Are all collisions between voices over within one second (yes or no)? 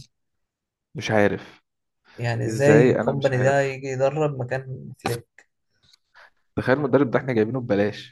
no